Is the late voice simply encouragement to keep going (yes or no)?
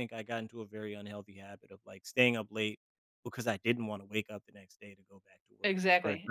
no